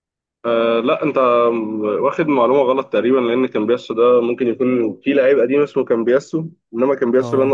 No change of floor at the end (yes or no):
yes